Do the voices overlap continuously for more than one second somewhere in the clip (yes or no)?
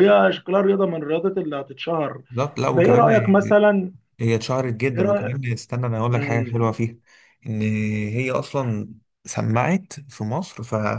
no